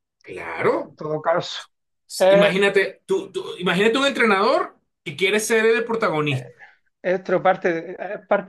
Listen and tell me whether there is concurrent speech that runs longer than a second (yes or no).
no